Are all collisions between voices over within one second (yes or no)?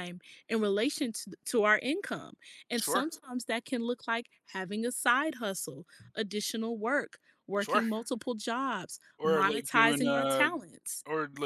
no